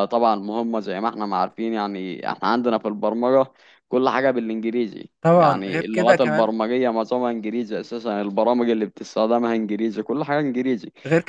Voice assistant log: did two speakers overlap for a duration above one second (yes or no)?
yes